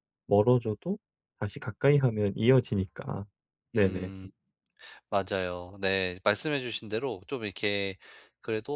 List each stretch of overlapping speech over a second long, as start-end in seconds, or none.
none